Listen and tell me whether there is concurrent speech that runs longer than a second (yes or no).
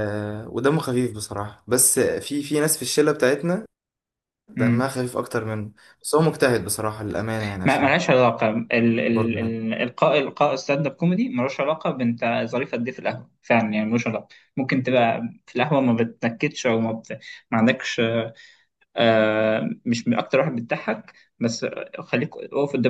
no